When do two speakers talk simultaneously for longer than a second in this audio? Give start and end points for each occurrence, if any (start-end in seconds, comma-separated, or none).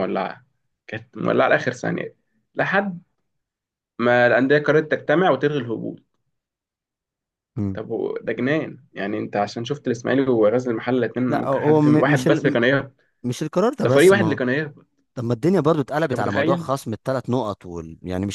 11.3-12.6